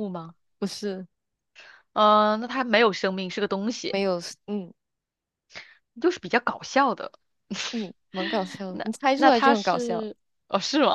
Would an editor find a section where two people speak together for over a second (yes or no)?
yes